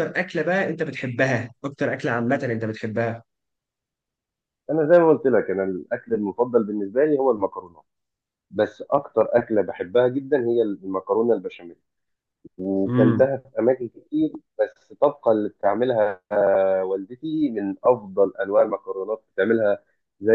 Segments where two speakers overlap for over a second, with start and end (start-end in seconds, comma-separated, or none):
none